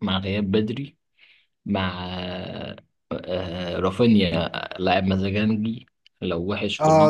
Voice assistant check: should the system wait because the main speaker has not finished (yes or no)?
no